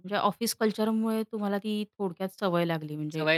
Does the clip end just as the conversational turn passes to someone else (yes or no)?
yes